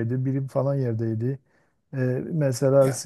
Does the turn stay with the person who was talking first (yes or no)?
yes